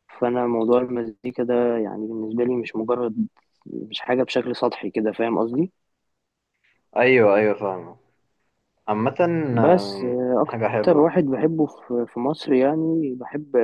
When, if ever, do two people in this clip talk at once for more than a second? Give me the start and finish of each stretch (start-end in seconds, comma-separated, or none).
9.6-11.1